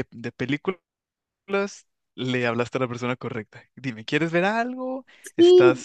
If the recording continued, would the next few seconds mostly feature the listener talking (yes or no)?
yes